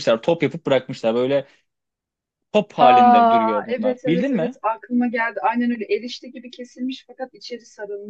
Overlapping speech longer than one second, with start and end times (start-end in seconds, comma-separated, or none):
2.8-4.6